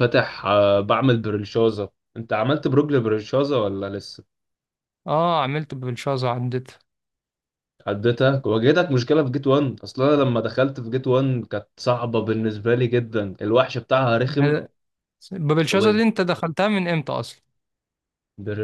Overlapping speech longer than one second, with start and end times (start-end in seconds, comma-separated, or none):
none